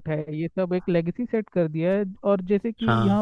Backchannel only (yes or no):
yes